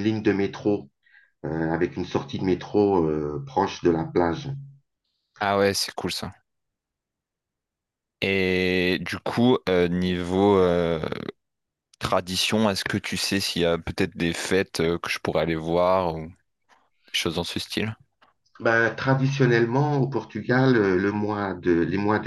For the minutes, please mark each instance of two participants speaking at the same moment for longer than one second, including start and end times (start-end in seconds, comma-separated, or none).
none